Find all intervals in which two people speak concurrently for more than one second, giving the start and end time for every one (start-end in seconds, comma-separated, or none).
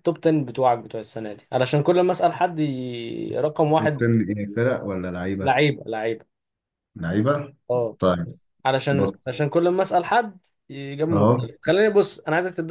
none